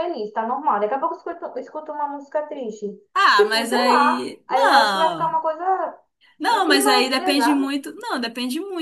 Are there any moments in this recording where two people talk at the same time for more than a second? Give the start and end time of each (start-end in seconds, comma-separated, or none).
3.3-5.4, 6.5-7.7